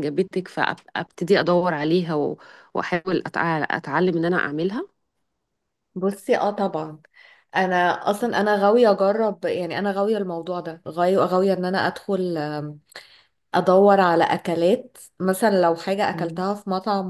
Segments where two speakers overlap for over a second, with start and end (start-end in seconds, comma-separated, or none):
none